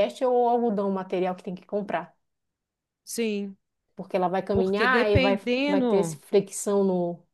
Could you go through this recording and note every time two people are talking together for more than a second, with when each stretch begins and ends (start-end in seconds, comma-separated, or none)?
4.5-6.2